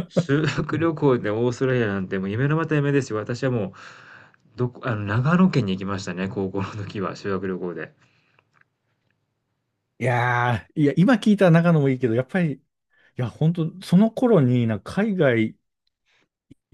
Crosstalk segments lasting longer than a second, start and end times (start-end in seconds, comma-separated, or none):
none